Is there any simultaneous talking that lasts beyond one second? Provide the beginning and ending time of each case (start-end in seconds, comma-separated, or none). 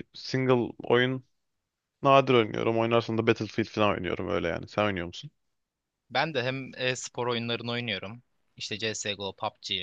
none